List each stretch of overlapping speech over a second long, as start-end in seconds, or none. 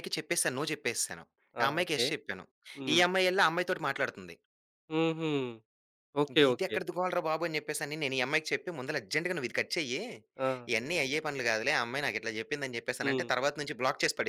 none